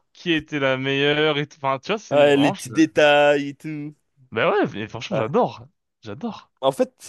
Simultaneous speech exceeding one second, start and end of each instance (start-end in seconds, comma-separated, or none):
none